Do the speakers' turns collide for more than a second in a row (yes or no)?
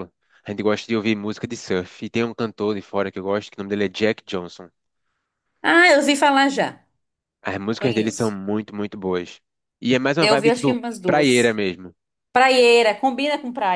yes